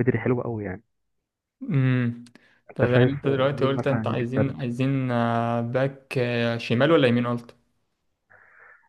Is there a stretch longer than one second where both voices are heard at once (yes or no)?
yes